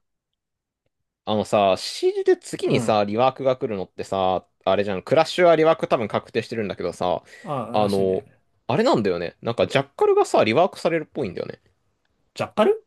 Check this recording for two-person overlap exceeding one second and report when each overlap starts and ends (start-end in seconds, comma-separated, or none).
none